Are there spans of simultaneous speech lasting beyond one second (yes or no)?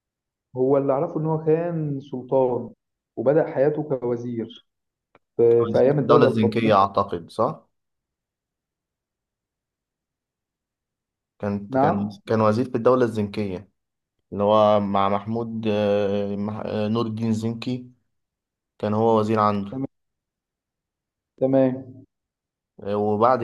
yes